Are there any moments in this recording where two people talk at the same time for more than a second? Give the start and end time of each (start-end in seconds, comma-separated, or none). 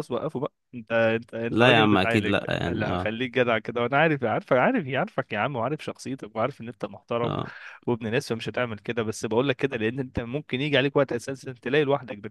1.5-3.1